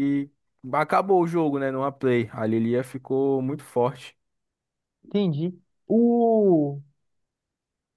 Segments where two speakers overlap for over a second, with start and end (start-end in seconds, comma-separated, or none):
none